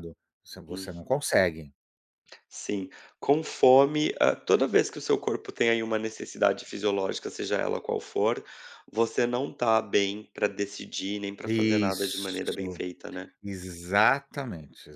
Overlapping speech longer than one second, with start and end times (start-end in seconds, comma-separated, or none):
11.5-12.8